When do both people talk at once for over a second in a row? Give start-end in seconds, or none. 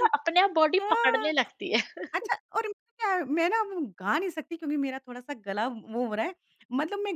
none